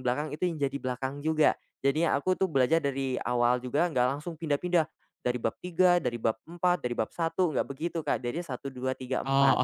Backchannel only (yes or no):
no